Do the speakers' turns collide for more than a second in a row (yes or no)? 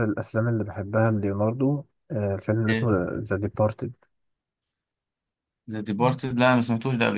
no